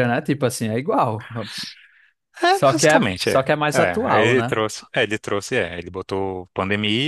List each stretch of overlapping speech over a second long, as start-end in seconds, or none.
2.5-4.5